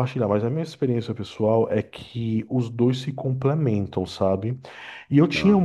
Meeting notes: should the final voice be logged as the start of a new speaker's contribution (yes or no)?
no